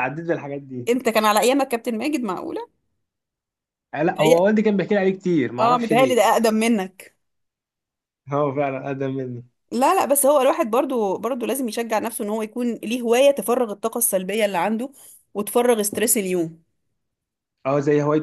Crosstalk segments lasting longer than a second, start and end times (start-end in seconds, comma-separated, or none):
none